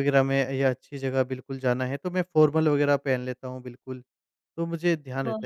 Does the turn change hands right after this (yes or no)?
no